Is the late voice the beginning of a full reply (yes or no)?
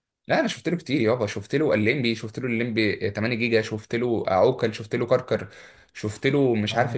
no